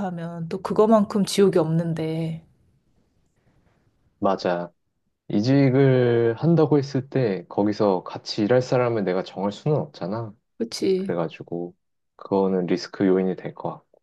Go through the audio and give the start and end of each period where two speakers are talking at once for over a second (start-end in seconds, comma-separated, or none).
none